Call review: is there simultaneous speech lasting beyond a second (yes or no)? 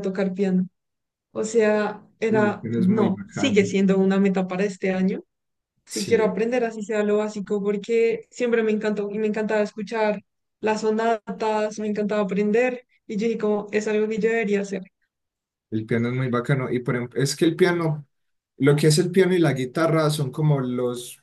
yes